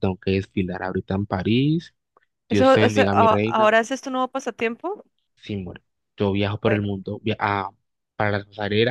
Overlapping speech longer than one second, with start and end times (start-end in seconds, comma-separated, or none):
2.5-3.7